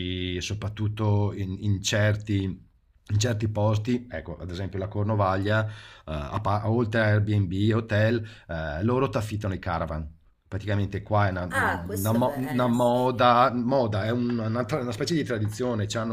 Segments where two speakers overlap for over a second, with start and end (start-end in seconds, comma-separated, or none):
11.5-13.1